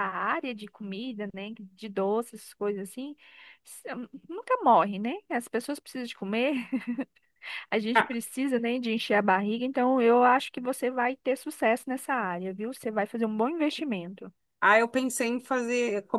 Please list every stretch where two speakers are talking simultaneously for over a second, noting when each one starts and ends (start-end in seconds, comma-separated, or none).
none